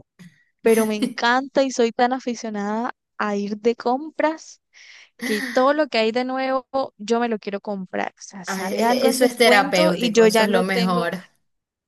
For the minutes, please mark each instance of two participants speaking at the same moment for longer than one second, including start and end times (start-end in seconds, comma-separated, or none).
8.5-11.1